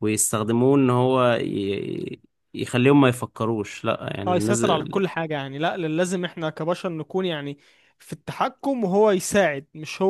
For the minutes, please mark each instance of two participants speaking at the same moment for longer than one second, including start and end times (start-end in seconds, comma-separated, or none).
none